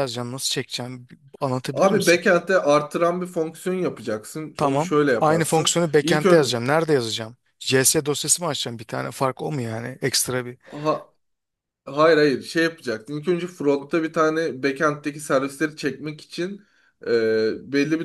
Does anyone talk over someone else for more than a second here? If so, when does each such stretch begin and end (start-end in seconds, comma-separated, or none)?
4.6-6.2